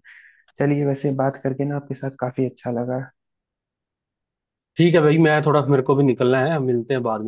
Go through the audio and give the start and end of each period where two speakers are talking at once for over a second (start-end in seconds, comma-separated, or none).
none